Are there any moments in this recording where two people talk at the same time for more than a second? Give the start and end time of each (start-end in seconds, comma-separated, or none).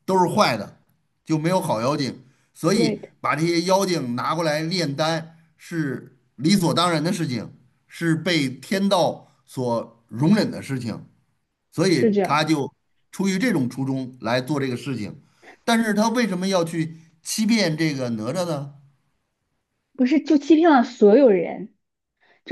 none